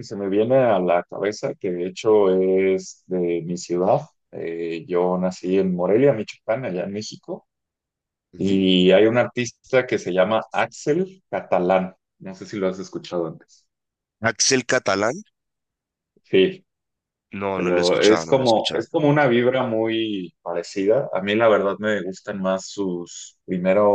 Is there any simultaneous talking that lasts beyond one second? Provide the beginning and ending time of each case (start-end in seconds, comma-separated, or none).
17.5-18.8